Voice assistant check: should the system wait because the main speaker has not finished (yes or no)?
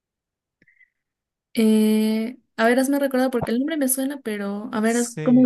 no